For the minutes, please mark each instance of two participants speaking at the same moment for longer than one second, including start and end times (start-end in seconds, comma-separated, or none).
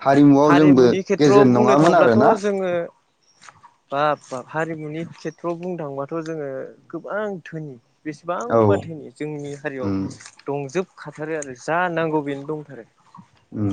0.6-2.3